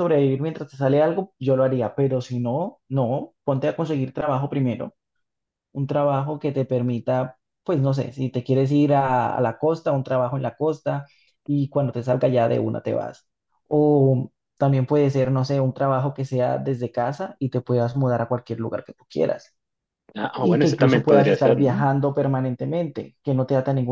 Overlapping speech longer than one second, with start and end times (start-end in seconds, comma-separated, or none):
20.4-21.8